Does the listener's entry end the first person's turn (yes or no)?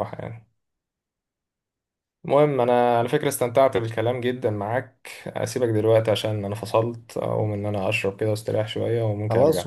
yes